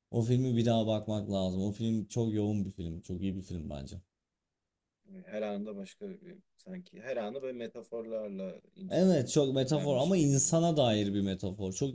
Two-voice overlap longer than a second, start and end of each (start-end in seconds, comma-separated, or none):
9.4-10.6